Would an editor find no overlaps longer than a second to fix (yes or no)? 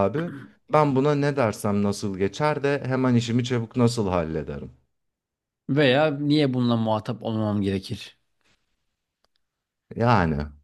yes